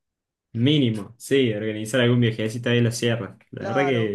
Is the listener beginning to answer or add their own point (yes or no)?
yes